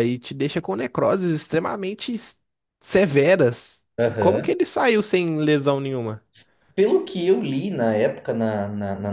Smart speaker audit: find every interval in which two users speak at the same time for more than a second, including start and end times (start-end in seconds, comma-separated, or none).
none